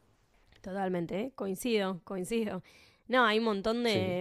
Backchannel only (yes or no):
yes